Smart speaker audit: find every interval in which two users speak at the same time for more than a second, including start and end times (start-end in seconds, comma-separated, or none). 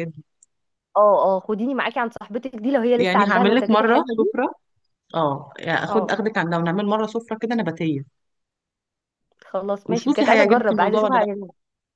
3.0-4.3, 9.8-11.3